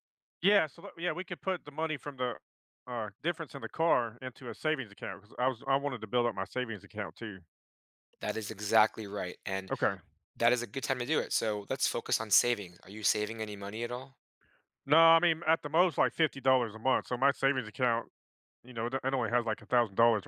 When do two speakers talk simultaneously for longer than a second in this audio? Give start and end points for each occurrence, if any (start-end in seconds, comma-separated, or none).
none